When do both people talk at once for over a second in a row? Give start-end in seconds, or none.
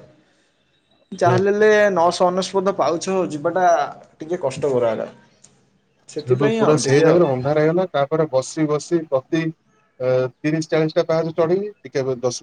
none